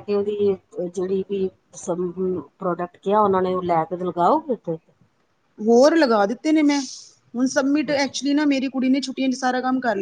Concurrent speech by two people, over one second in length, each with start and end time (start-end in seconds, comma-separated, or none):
none